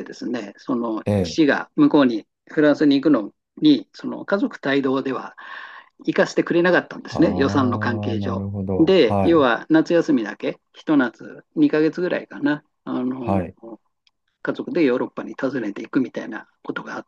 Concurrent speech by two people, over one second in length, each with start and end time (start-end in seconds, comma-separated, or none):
7.1-9.5